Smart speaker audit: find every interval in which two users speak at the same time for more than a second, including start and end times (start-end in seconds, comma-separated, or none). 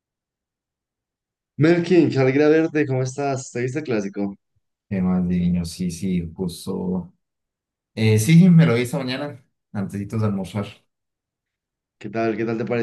none